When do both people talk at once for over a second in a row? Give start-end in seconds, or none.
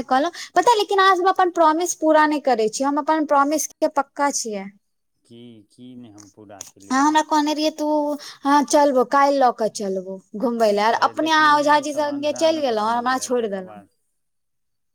11.0-13.8